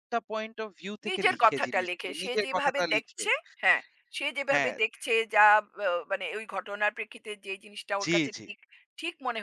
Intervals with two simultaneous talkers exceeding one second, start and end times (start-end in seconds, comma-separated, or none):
1.1-3.2